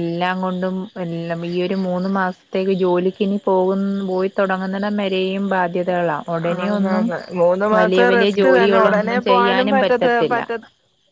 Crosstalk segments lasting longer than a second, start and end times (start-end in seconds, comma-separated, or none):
7.8-10.4